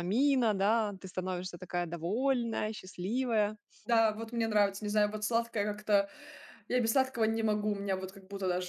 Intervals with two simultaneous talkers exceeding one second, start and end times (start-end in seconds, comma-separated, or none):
none